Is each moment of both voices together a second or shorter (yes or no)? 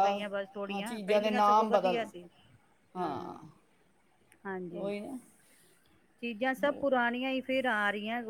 no